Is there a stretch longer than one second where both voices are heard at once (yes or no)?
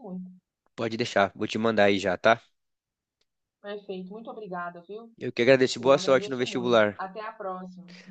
yes